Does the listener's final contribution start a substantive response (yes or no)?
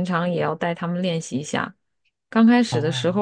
no